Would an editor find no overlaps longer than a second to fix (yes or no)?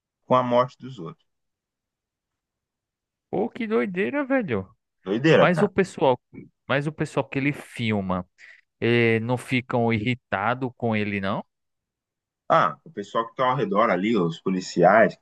yes